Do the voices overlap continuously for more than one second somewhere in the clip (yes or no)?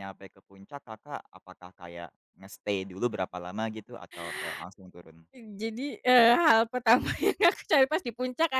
no